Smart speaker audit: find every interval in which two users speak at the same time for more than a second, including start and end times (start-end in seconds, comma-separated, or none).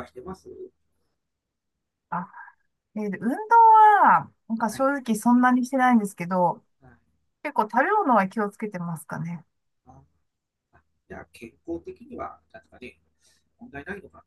none